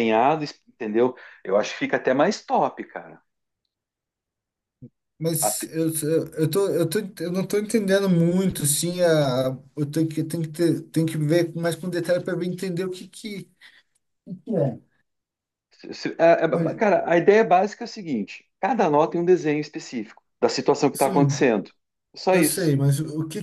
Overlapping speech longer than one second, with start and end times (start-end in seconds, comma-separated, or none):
none